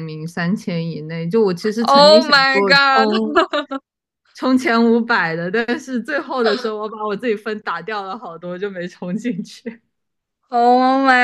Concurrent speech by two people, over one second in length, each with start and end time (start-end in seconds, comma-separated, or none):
1.8-3.1